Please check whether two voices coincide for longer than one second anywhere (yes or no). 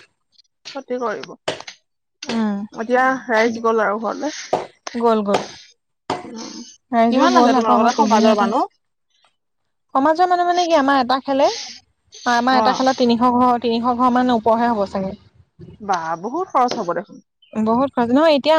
yes